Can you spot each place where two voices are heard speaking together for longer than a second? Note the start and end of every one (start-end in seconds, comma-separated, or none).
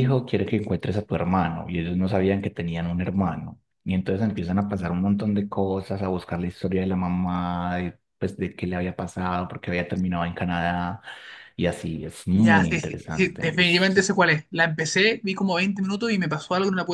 12.3-13.9